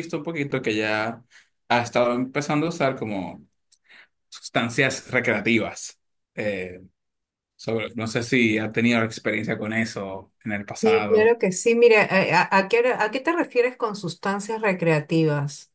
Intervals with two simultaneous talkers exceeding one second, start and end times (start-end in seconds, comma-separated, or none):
none